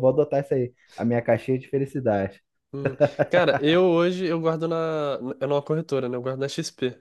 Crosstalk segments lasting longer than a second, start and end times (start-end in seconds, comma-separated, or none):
none